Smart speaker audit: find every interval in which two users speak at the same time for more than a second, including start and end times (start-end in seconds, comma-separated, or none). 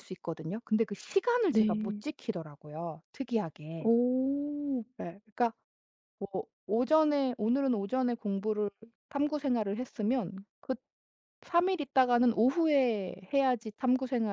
none